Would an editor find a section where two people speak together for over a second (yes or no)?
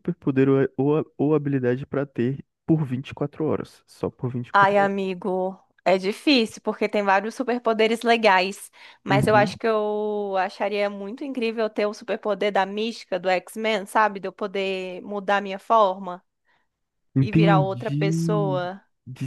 yes